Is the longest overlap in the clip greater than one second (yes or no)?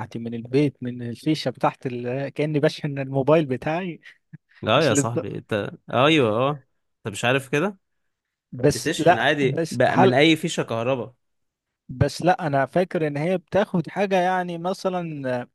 yes